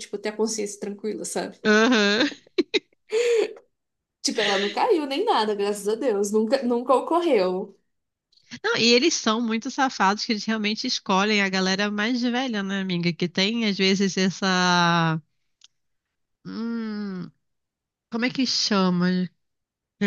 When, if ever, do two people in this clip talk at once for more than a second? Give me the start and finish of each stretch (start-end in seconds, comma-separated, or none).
none